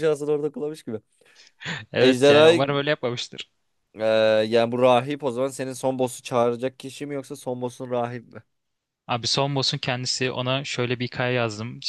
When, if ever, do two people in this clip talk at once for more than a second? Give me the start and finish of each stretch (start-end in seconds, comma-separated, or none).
none